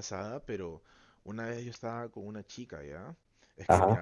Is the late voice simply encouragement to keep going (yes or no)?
yes